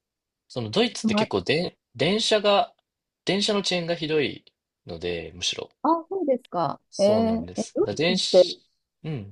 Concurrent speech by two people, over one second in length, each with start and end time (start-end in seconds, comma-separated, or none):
6.9-8.5